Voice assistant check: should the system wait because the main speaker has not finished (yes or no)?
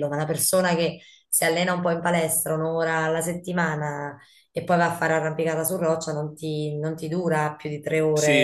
no